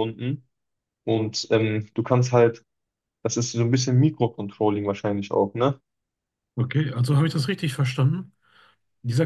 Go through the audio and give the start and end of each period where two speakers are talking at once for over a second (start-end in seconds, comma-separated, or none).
none